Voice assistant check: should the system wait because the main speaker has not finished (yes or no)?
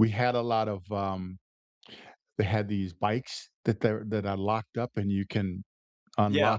no